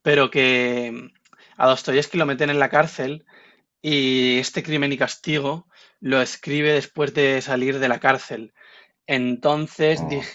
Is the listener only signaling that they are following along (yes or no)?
yes